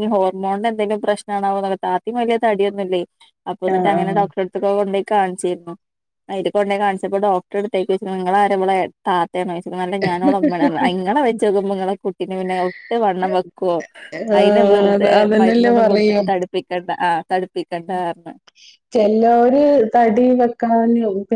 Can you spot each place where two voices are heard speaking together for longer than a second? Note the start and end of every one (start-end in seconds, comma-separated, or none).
14.4-16.2